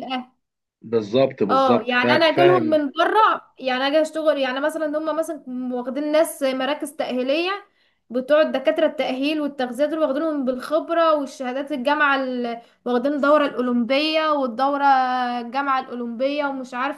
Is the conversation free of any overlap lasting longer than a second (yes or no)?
no